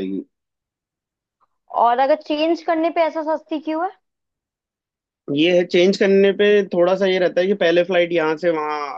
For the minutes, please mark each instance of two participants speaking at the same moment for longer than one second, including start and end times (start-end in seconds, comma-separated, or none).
none